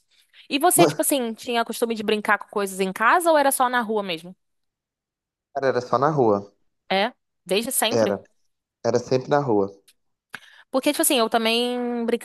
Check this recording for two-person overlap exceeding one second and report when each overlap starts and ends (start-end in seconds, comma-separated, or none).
none